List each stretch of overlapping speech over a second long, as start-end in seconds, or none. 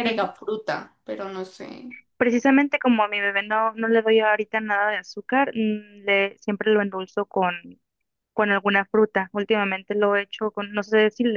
none